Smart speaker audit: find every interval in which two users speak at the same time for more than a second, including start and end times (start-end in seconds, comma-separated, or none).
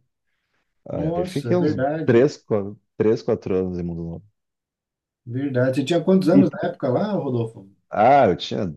0.9-2.2